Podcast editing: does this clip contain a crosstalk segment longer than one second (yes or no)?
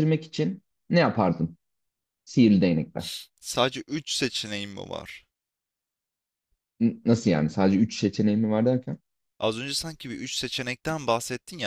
no